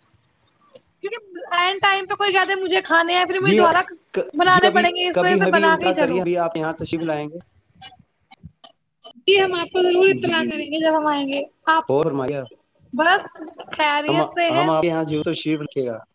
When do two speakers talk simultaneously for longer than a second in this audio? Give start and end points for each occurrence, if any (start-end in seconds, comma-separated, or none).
4.4-6.2